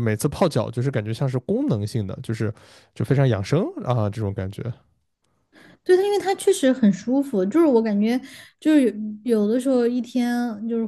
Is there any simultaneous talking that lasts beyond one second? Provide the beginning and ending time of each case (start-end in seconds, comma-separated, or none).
none